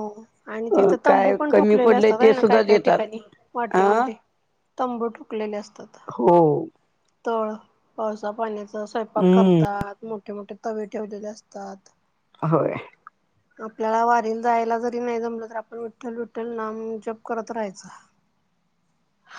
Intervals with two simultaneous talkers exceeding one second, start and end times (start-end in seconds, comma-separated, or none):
1.1-3.0